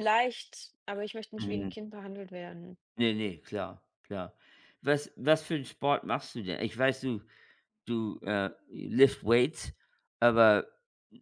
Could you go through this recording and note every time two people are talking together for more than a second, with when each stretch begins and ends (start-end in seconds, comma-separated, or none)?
none